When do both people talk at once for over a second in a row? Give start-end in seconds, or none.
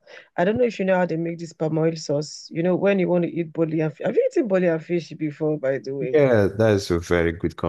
none